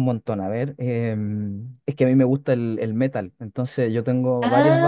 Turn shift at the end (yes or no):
no